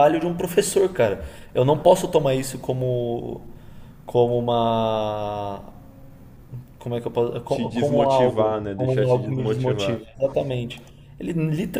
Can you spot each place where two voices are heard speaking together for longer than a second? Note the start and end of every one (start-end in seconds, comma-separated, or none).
7.5-10.0